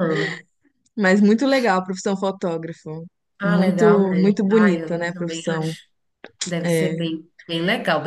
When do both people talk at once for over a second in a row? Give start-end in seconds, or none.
3.4-5.7